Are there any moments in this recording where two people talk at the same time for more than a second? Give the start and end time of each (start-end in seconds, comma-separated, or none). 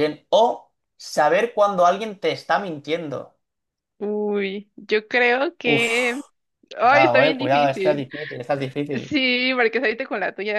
6.9-8.1